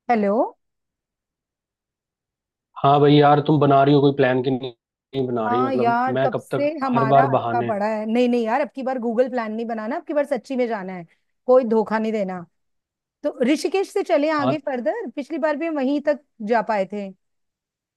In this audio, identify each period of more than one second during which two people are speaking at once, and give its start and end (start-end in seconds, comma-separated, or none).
5.5-7.7